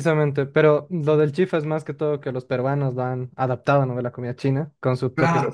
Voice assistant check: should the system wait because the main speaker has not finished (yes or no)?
no